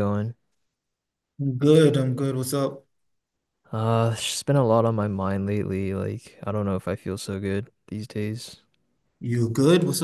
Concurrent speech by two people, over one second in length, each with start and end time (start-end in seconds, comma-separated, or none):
none